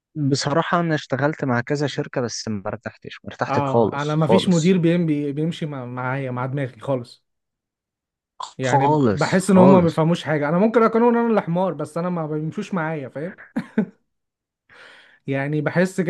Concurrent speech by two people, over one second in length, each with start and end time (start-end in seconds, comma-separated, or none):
3.5-4.8, 8.7-10.0